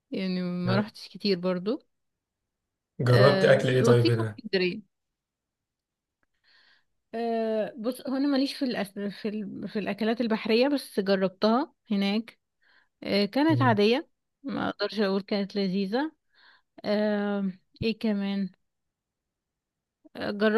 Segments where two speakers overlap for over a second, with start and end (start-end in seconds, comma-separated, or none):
3.1-4.4